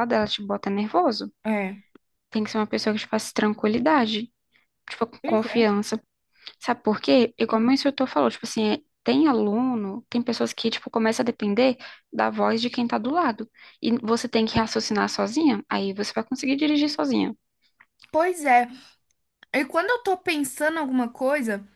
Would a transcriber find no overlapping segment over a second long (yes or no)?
yes